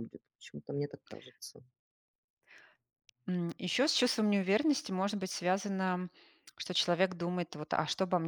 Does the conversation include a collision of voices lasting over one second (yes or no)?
no